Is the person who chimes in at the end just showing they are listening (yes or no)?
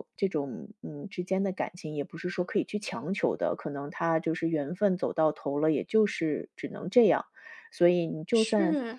yes